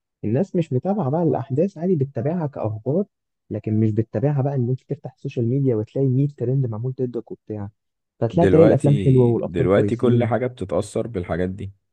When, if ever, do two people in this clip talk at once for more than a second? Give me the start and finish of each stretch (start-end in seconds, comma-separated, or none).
8.3-10.3